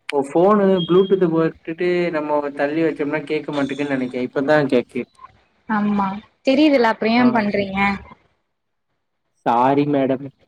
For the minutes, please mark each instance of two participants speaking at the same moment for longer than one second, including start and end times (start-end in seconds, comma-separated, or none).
none